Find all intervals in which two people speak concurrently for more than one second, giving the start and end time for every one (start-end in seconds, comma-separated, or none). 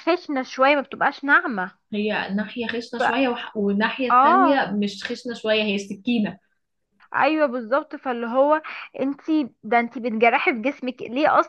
none